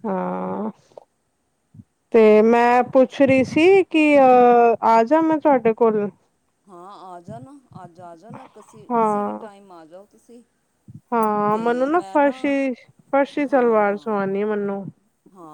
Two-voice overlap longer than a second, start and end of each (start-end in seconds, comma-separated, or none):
none